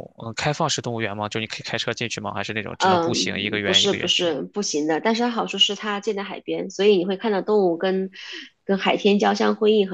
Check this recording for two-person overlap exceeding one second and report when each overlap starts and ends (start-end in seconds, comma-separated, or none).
2.8-4.3